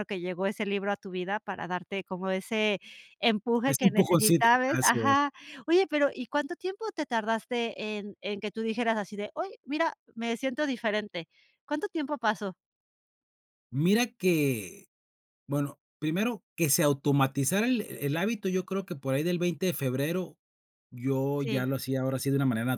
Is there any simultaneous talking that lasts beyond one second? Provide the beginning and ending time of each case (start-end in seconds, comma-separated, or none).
3.7-5.2